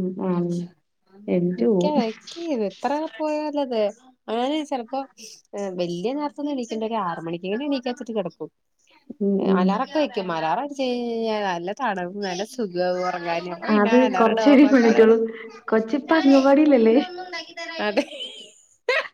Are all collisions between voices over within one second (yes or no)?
yes